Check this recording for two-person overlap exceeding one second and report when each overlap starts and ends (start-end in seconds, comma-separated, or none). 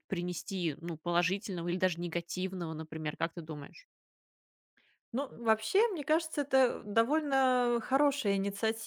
none